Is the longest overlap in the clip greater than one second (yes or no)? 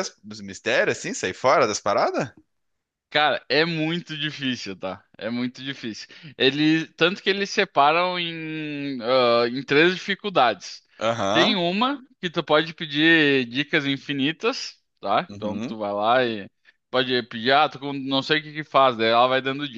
no